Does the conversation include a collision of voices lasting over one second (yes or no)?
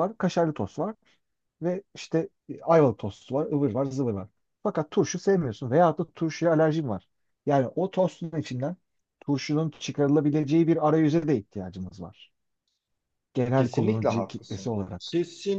yes